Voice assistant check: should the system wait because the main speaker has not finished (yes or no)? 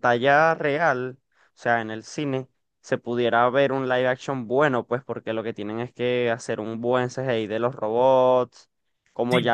yes